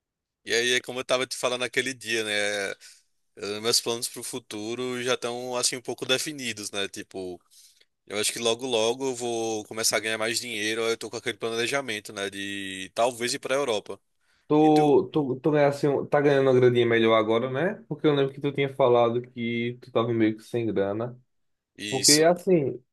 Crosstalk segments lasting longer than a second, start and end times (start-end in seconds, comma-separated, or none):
none